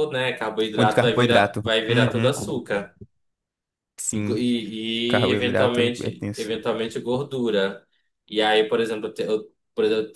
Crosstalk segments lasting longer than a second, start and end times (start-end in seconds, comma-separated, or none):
0.8-2.3, 5.1-6.5